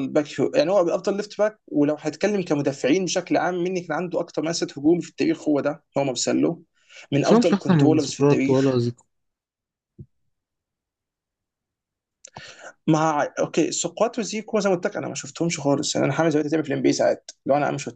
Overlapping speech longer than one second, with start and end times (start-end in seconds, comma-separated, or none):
7.2-8.8